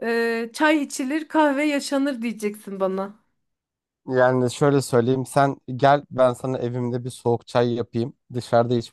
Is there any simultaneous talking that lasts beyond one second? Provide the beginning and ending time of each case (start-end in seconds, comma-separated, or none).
none